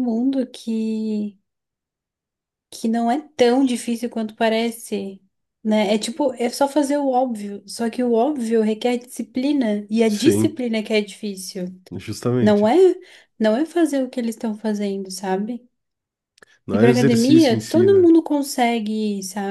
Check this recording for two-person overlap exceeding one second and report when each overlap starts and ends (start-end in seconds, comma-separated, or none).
16.7-18.1